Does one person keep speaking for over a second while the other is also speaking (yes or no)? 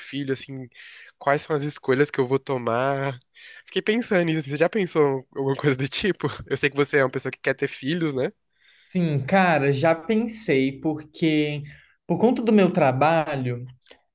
no